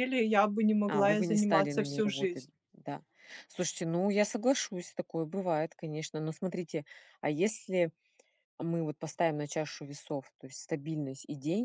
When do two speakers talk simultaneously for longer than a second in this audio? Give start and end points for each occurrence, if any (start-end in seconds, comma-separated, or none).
0.9-2.5